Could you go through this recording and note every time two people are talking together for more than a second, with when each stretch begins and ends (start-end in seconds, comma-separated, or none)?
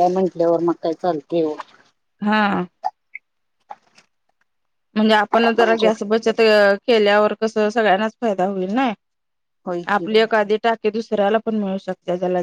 none